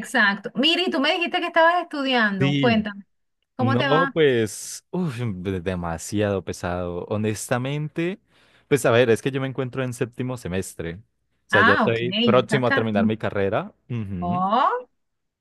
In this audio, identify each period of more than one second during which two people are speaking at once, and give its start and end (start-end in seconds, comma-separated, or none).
11.5-12.9